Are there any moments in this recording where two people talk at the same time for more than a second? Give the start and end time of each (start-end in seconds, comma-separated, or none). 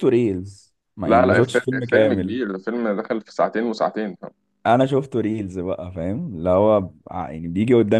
1.1-2.4